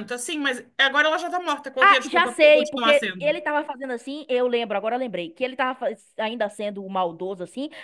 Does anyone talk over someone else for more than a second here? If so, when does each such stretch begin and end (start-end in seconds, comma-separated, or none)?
1.8-3.4